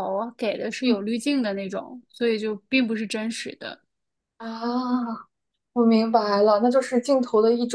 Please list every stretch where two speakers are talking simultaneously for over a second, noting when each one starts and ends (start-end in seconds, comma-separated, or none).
none